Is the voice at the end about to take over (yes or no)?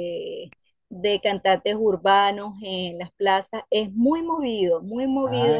yes